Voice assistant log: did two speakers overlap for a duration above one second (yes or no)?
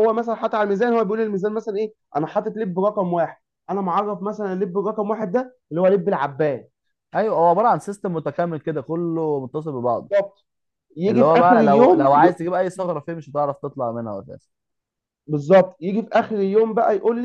yes